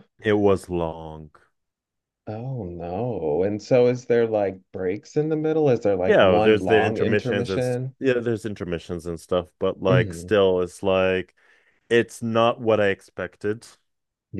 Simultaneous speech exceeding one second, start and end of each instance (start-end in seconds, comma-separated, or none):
6.1-7.9